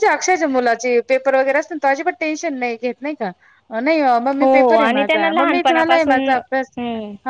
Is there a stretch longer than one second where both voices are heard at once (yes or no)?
yes